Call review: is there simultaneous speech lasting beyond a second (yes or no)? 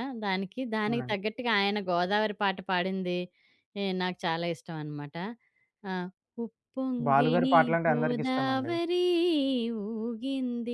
yes